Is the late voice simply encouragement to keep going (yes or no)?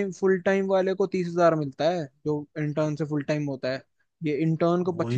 no